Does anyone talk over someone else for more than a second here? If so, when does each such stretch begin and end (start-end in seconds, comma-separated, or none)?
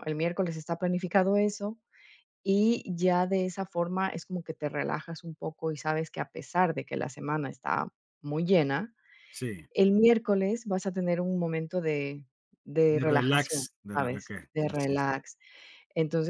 12.9-15.1